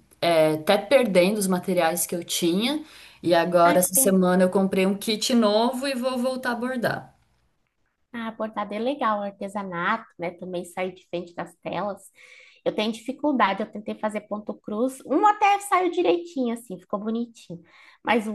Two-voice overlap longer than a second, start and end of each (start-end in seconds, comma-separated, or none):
none